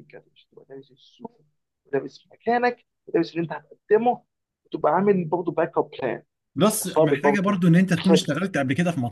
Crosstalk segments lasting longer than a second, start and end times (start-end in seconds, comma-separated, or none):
6.8-8.3